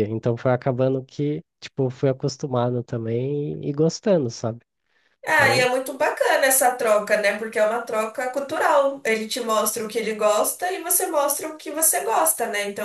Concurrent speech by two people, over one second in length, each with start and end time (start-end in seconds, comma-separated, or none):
none